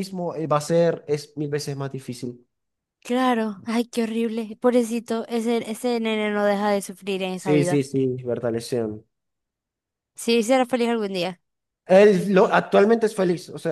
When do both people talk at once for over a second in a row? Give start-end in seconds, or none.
none